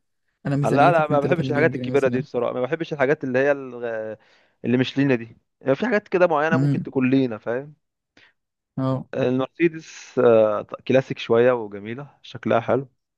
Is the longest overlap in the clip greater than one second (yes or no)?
yes